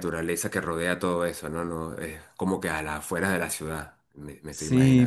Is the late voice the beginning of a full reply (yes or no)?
yes